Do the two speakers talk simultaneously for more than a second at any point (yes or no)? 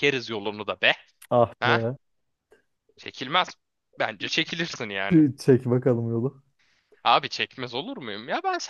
no